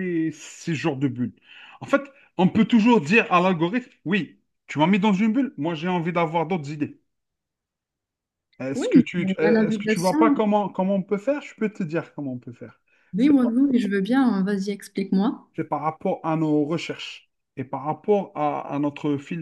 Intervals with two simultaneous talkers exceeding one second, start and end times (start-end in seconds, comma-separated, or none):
8.7-10.4